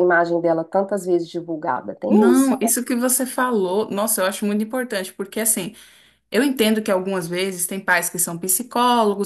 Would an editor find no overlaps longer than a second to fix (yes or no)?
yes